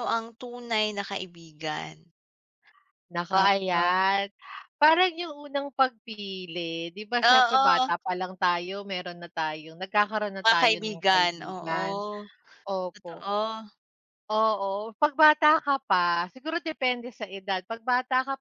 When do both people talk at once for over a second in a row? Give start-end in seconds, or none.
10.4-11.8